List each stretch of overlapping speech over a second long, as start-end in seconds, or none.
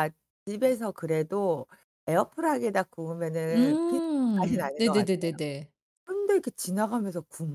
3.5-5.3